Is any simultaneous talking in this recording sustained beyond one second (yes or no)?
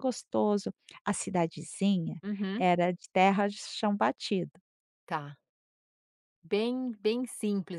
no